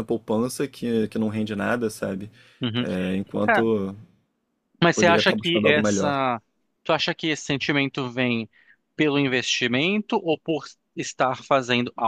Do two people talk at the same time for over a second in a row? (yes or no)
yes